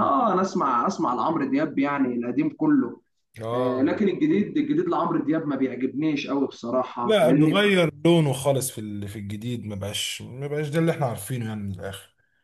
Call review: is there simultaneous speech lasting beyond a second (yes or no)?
no